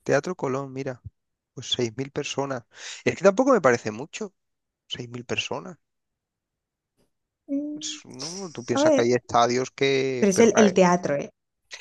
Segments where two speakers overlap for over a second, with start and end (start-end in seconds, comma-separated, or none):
7.8-9.1